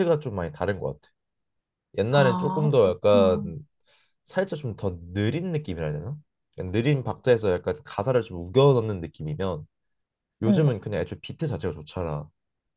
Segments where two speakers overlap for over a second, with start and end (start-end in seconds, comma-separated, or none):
2.1-3.5